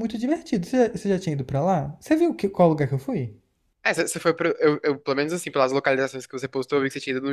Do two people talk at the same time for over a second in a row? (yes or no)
no